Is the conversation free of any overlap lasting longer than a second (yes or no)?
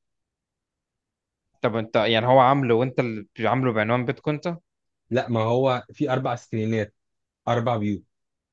yes